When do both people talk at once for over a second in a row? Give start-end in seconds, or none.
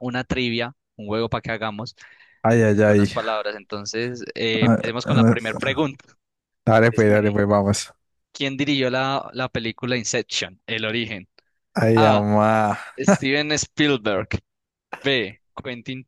4.6-5.9